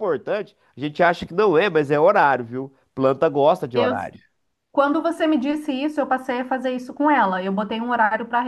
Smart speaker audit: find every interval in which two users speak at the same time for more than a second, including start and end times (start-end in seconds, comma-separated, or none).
none